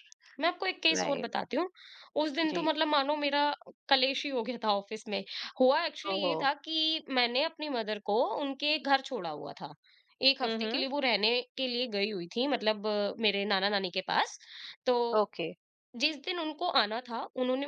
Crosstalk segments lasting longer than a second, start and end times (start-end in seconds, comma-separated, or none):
none